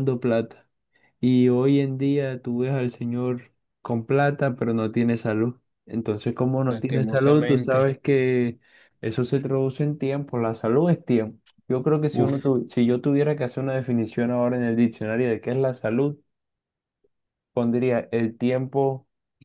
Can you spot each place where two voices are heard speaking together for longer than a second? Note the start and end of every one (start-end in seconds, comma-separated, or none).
6.7-7.9